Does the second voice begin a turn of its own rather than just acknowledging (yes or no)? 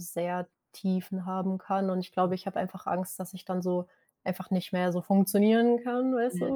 yes